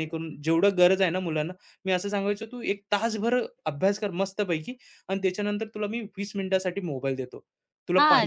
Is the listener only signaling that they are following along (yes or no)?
no